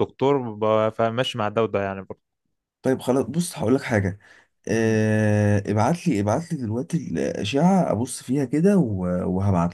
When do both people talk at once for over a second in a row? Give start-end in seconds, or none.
none